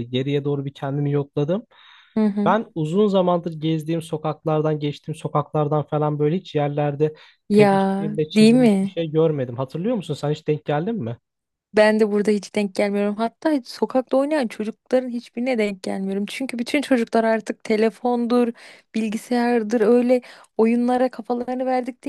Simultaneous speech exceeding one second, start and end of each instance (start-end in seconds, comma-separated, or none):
7.5-9.0